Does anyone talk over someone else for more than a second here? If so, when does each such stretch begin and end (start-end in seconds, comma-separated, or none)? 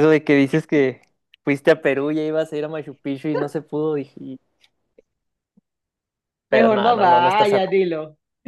6.5-7.7